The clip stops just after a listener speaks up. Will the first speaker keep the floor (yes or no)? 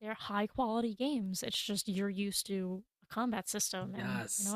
no